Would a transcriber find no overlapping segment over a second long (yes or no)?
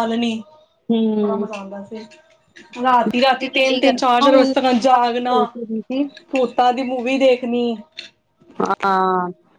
no